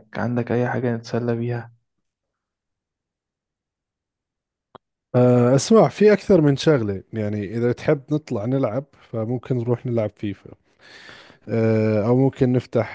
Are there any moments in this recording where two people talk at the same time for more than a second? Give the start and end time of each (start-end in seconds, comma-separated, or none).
none